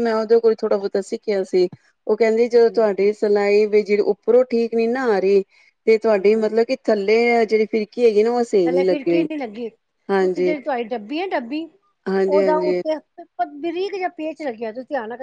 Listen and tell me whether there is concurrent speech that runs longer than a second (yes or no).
no